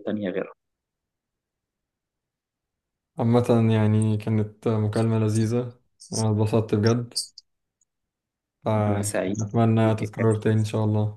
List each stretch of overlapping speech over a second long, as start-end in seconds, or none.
8.9-10.5